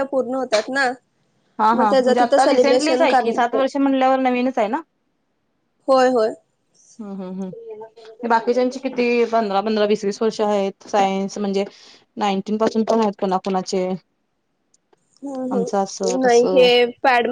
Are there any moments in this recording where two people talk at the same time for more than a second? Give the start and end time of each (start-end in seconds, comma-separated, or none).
1.8-3.6